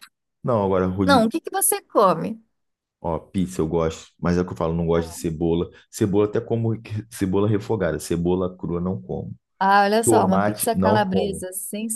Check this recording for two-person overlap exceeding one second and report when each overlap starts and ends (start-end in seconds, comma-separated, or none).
10.0-11.4